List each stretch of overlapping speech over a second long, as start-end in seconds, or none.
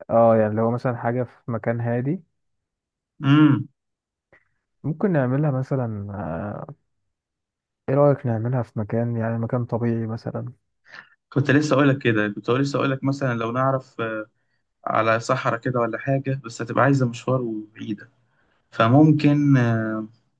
none